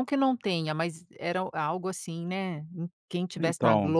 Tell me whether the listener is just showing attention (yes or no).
yes